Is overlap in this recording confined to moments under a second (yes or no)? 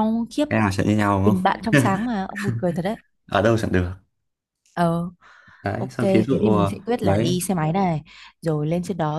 no